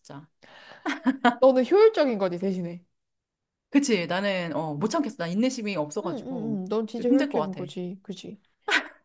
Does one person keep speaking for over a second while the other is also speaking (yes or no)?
yes